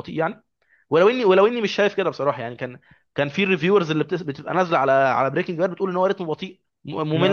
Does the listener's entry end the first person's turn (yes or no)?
yes